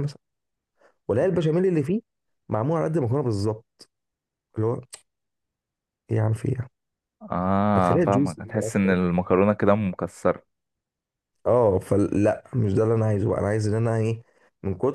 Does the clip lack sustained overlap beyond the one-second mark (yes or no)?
no